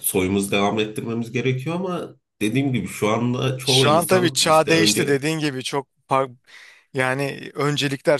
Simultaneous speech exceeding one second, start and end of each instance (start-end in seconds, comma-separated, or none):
3.6-5.2